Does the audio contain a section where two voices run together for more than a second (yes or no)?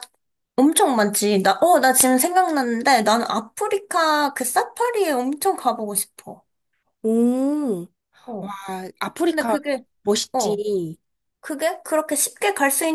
no